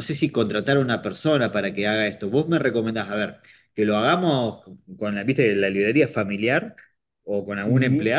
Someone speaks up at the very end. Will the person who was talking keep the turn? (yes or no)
yes